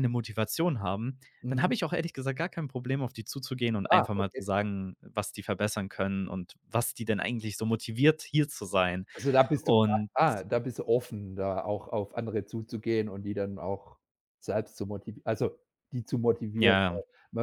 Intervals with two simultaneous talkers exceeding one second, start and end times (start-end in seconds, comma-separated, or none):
none